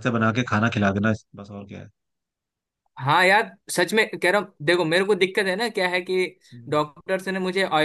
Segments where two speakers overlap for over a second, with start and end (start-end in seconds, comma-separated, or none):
none